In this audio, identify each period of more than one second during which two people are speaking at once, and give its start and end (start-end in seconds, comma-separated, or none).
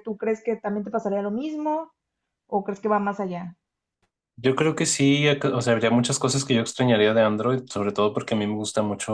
none